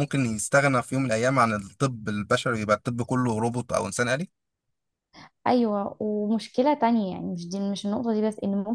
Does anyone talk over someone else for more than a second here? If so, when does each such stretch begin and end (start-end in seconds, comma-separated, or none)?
none